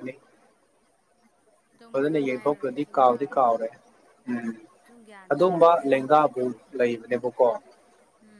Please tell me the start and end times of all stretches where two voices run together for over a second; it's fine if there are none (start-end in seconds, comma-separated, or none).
1.9-3.6